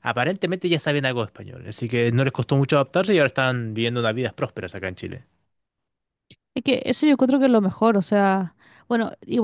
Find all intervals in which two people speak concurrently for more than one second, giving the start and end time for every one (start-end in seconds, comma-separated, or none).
none